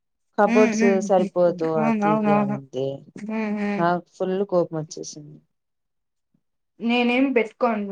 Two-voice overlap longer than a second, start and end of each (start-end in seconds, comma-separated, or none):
0.5-2.6